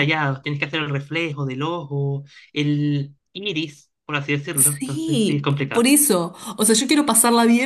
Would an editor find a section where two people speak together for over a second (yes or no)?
yes